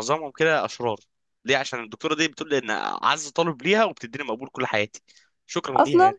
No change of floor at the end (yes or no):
no